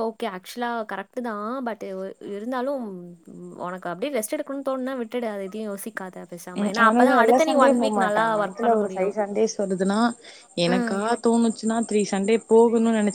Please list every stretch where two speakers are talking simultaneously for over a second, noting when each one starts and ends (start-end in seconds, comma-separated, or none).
6.6-9.1